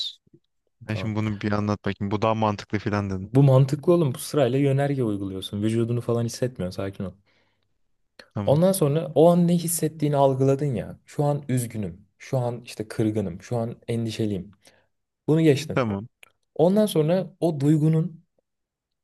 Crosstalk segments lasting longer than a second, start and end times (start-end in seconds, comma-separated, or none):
none